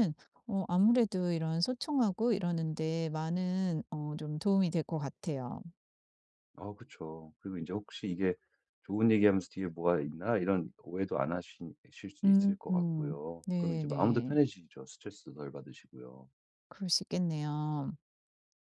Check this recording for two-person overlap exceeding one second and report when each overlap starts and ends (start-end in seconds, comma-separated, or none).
12.2-14.3